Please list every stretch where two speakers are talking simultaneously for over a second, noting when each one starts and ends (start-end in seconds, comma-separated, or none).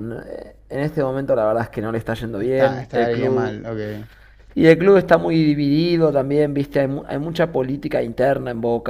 2.4-3.6